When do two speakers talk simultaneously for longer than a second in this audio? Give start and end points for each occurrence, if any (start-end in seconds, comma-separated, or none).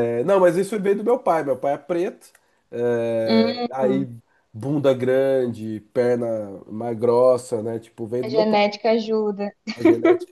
none